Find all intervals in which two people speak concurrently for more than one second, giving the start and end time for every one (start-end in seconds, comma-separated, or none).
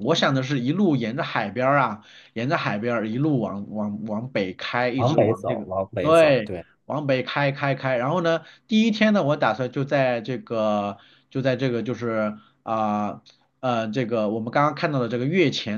5.0-6.7